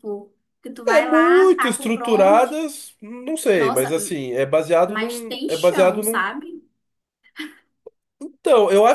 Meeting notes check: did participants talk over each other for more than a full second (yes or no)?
yes